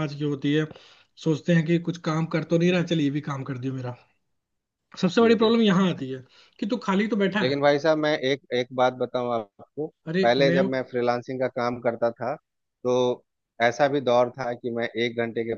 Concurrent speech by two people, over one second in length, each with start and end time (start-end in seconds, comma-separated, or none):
none